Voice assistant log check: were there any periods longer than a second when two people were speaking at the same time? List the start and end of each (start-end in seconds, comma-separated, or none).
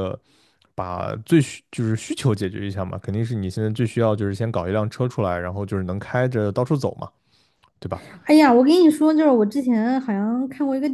none